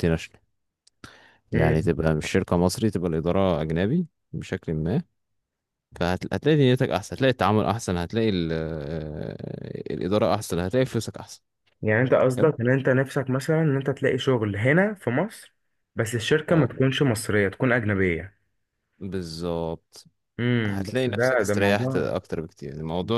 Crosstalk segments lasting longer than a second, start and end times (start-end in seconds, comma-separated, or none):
20.7-22.1